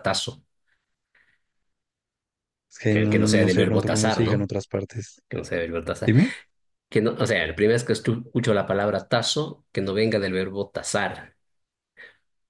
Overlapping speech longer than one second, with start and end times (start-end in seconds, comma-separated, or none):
2.9-4.5